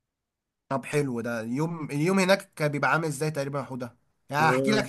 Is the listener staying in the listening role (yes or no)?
yes